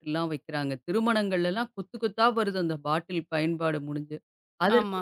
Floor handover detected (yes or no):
no